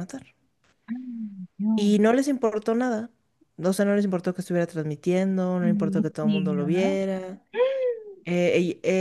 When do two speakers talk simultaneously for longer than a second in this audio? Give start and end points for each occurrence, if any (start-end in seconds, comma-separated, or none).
5.6-7.0